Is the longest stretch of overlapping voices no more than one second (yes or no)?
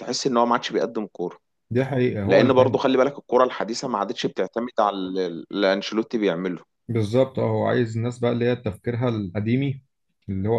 yes